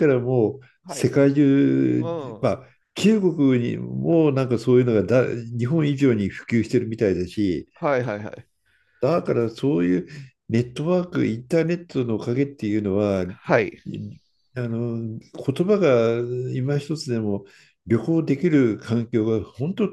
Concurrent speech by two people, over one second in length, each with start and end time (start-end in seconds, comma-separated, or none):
none